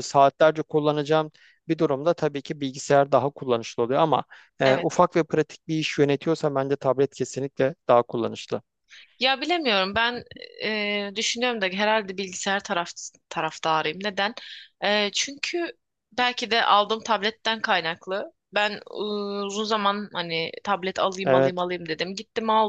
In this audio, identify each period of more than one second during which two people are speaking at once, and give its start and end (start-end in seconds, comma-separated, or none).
none